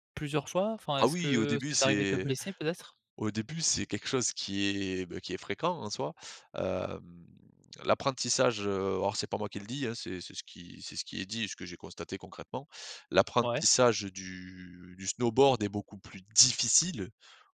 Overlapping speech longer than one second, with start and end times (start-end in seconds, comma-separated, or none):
1.0-2.3